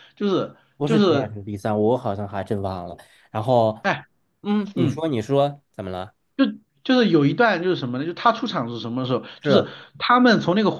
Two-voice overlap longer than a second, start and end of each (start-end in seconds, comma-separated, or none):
none